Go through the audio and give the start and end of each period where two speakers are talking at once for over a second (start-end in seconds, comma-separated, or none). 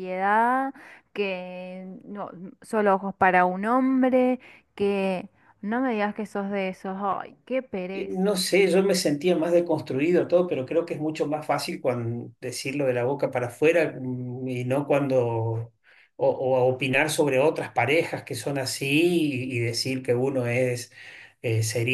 none